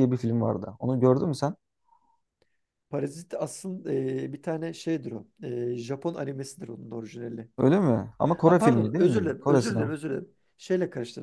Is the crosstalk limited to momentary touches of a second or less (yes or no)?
no